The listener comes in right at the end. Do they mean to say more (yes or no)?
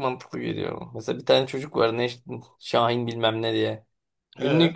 no